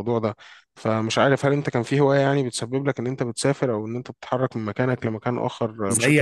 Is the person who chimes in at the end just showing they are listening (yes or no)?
no